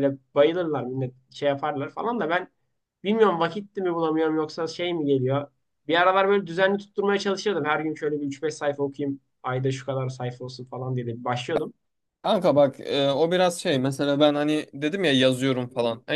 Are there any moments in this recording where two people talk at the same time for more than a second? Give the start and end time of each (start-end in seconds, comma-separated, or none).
none